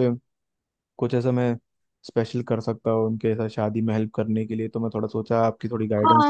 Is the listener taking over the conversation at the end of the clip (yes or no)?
yes